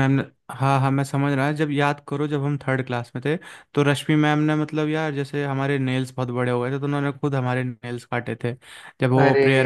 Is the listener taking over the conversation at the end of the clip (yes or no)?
no